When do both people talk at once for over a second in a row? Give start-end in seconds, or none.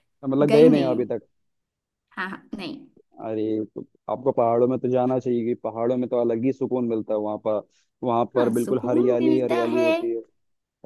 8.4-9.9